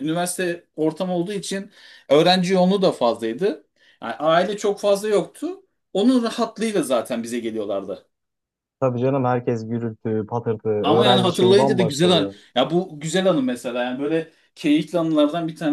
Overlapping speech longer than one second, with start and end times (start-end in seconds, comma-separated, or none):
10.8-12.3